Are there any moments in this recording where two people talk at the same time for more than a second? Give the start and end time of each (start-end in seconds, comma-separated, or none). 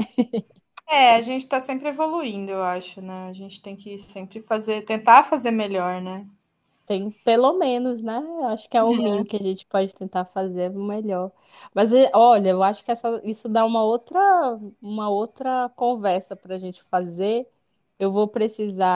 none